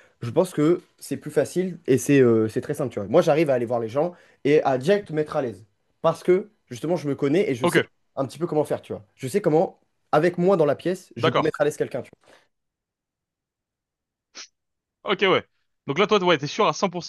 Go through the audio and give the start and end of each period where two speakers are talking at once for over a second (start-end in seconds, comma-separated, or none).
none